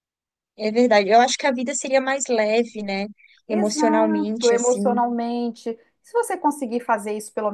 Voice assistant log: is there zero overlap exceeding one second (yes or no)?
no